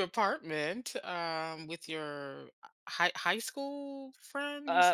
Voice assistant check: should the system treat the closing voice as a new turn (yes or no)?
yes